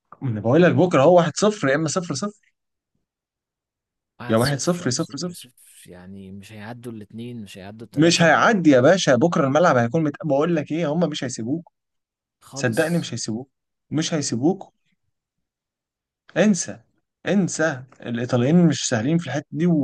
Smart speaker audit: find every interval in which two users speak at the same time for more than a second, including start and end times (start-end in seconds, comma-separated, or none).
4.3-5.5